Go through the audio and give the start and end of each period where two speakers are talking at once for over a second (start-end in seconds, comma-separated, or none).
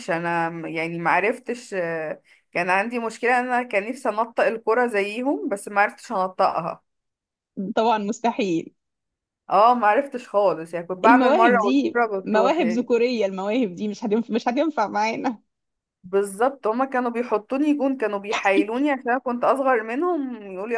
11.0-12.9